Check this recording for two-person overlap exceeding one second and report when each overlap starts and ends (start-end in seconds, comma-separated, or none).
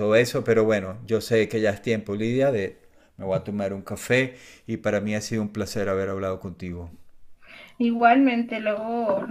none